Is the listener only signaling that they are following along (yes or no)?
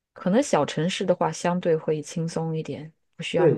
no